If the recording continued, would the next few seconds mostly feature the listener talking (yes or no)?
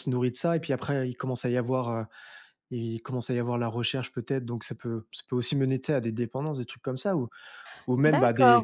yes